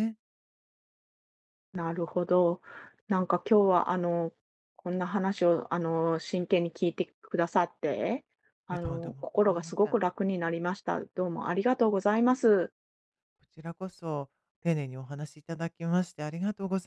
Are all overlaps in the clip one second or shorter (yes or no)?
no